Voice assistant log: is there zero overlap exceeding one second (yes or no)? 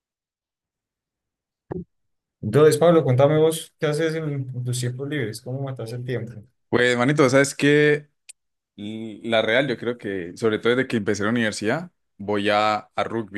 yes